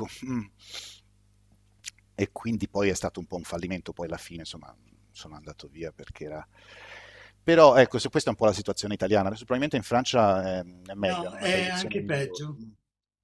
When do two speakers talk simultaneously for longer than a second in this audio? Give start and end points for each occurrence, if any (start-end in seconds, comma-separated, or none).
11.1-12.6